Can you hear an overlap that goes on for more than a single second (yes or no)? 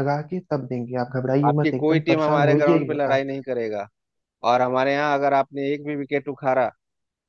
yes